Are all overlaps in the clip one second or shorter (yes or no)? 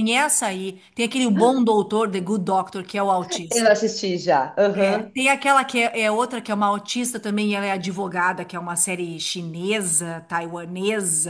yes